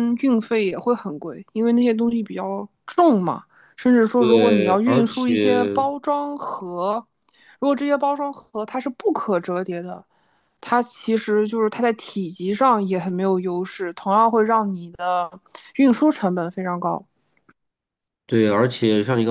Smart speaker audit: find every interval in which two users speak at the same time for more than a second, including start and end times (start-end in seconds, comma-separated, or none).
4.2-5.4